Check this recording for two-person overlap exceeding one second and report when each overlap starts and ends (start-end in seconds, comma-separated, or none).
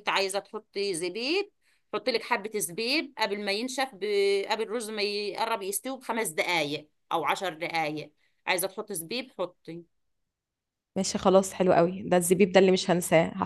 none